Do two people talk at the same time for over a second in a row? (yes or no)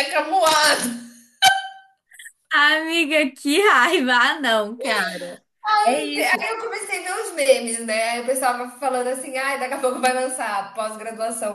no